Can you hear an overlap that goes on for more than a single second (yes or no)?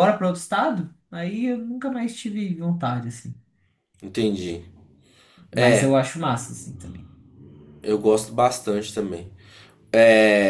no